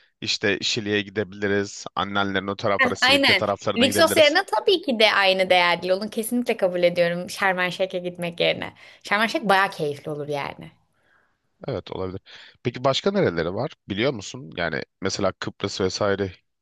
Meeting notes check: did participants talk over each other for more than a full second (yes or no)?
yes